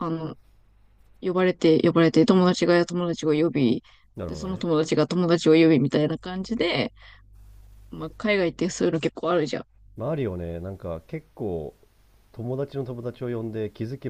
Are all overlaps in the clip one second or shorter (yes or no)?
yes